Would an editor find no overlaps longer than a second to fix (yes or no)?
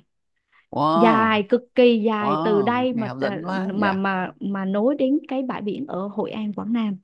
no